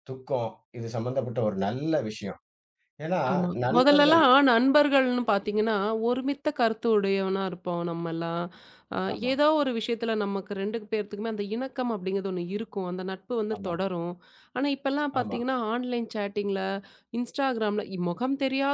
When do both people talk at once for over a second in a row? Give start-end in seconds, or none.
none